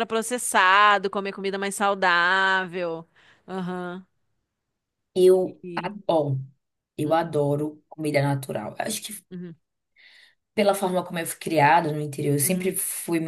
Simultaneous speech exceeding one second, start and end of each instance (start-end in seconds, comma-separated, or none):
none